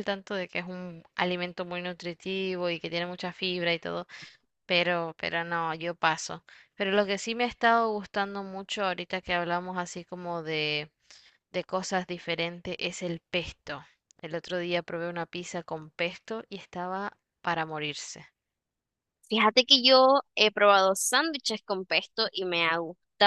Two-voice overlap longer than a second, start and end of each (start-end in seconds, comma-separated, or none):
none